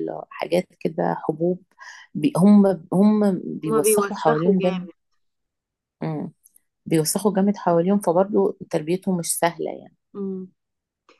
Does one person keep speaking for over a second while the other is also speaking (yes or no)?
yes